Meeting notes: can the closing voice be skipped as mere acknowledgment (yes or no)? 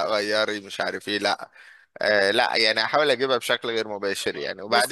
yes